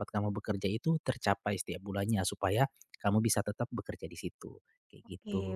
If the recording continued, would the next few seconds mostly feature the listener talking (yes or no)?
yes